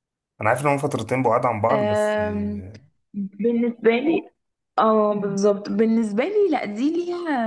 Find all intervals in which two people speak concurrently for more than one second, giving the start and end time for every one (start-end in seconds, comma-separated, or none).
none